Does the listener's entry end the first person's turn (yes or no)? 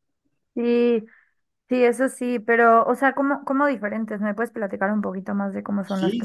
yes